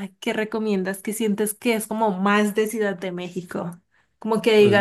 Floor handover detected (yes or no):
no